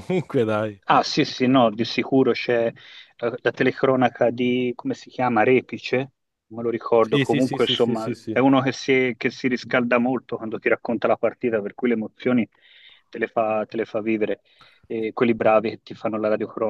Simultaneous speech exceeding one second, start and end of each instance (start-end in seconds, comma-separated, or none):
7.0-8.4